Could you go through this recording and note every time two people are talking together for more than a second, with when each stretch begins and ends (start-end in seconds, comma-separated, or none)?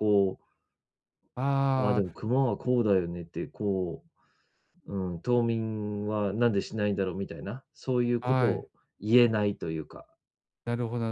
none